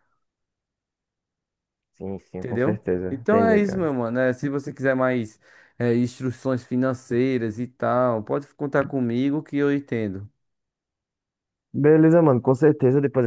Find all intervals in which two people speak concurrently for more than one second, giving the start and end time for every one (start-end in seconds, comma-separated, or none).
2.4-3.9